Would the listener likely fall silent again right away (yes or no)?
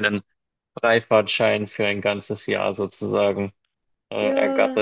no